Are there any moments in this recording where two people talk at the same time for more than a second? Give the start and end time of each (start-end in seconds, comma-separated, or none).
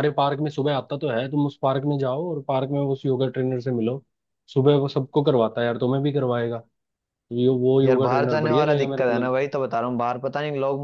7.8-9.3